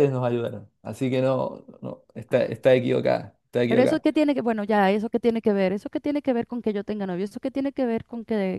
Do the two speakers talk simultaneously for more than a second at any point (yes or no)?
no